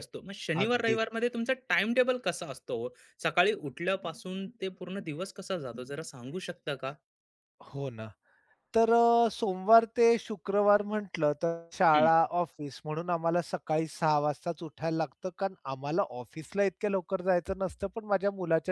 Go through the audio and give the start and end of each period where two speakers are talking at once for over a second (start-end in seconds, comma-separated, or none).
none